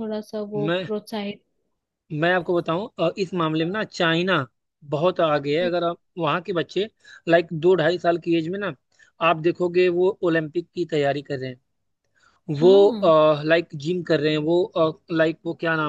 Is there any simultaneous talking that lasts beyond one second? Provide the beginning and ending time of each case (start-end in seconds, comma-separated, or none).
none